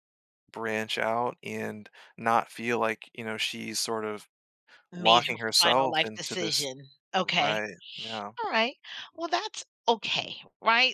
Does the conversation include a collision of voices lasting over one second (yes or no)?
yes